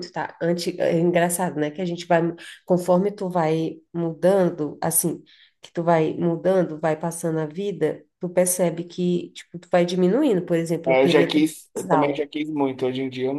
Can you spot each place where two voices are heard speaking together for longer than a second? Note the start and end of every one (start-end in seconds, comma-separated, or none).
10.9-12.3